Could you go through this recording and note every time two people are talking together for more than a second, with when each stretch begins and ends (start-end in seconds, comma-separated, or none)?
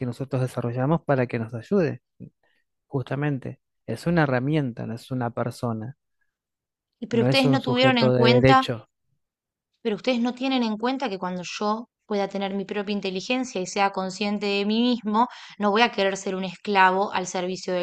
7.1-8.7